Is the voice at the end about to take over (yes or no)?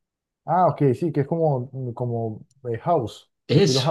yes